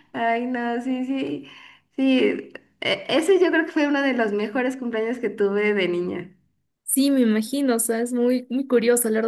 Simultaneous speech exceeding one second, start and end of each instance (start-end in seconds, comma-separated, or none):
none